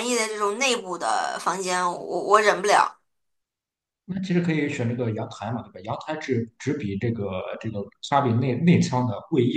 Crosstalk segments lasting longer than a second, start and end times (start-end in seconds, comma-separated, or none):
none